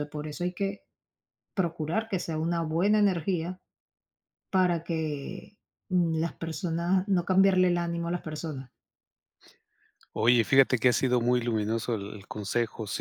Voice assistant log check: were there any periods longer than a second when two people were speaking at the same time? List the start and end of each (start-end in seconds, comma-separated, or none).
none